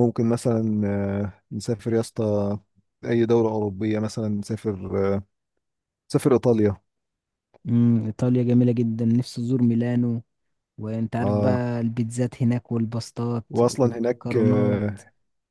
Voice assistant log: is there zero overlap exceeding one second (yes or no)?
no